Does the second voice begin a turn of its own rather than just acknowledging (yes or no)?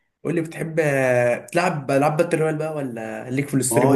yes